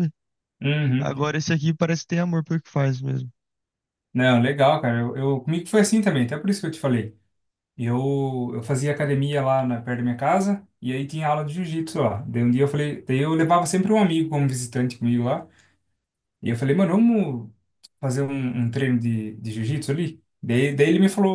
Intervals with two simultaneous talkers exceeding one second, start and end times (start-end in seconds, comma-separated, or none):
none